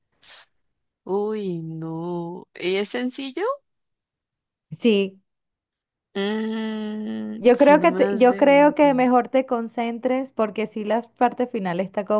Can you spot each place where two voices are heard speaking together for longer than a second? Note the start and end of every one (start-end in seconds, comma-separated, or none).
7.4-9.0